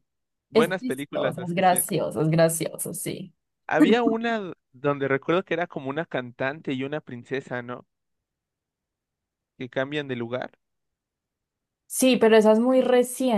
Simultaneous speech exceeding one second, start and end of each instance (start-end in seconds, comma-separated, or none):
0.5-1.8